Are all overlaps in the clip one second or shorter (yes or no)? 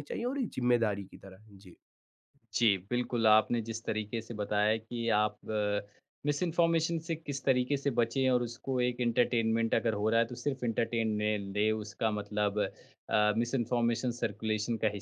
yes